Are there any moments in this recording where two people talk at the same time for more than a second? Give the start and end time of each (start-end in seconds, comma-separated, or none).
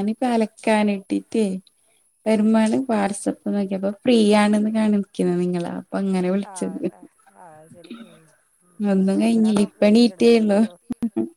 9.1-10.6